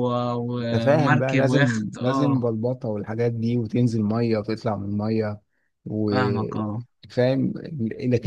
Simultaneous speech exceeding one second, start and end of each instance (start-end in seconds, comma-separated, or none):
0.6-2.4